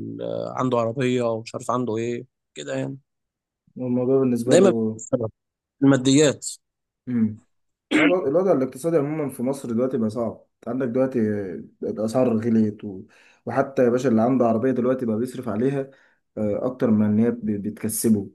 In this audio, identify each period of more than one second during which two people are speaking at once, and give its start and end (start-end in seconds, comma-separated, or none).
none